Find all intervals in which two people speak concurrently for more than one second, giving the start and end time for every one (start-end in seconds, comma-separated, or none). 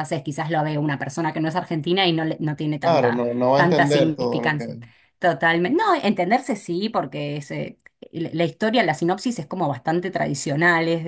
2.8-4.7